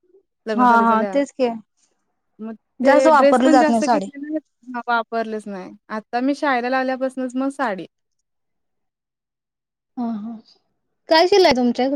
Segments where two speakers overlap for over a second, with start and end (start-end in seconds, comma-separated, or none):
2.9-4.0